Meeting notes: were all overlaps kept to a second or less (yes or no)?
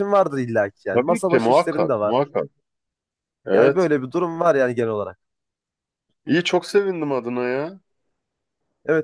no